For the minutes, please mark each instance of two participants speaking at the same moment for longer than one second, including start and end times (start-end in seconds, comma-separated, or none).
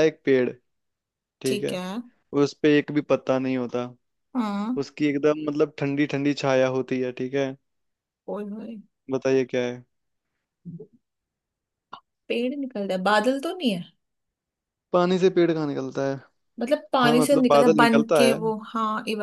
17.0-18.4